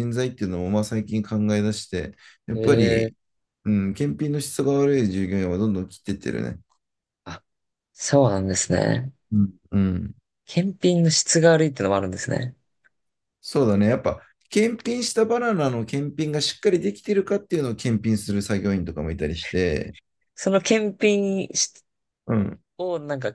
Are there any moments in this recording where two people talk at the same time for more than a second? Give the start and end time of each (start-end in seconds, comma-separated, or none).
none